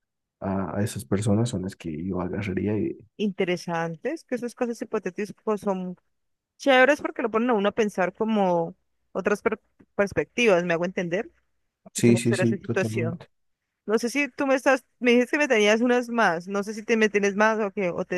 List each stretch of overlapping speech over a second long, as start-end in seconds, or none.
12.0-13.2